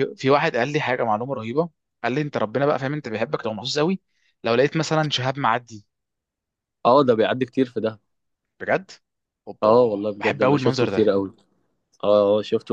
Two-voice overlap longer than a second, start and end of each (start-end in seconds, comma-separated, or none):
9.6-11.1